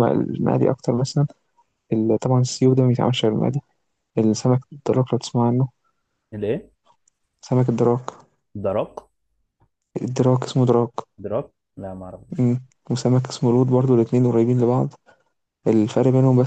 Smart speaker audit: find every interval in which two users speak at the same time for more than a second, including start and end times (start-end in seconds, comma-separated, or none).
none